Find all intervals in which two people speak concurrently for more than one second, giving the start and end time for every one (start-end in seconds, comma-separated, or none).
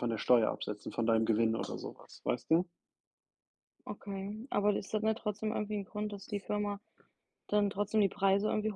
none